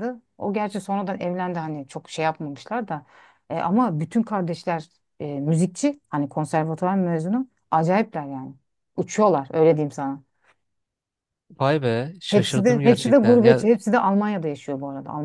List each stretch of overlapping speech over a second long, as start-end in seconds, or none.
12.3-13.6